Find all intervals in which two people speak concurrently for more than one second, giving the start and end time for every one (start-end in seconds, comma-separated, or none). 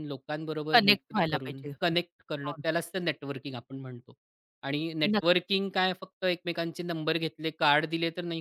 0.7-2.5